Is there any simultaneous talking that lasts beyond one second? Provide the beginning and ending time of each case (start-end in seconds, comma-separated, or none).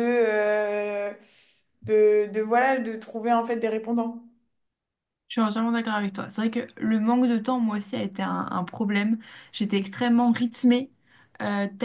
none